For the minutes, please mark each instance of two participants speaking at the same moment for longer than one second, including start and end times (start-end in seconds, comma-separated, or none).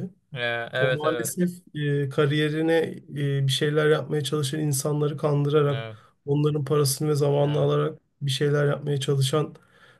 none